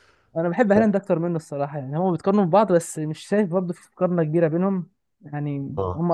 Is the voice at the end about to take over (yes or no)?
no